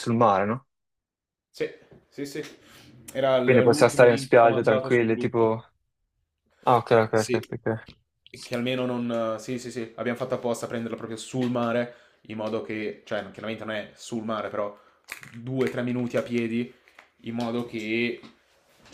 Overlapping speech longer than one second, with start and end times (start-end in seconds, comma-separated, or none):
3.4-5.6